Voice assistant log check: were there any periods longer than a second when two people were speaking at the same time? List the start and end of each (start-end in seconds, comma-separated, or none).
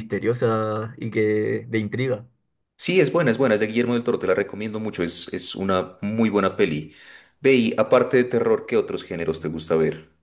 none